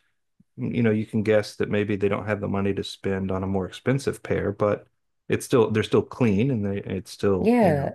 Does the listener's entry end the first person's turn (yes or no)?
yes